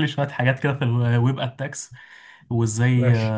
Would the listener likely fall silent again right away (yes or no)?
yes